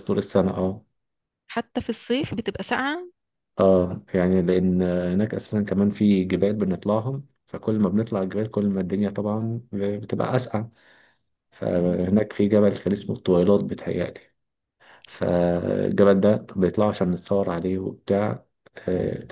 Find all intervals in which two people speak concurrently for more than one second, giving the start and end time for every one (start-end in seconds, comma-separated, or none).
none